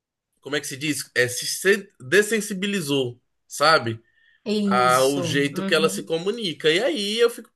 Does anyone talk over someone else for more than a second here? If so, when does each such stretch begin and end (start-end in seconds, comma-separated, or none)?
4.7-6.1